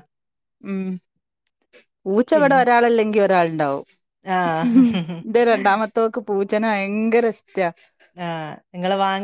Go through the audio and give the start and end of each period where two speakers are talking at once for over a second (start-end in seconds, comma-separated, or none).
none